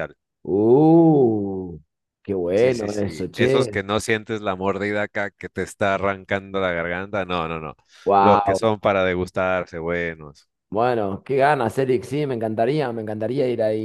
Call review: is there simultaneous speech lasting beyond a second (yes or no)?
yes